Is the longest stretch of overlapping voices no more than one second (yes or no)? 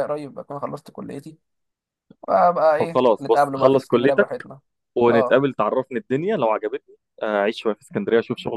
no